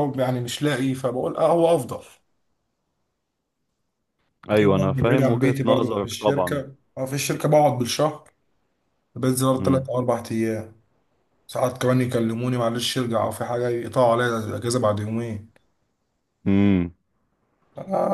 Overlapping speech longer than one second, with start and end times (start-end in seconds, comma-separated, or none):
4.6-6.7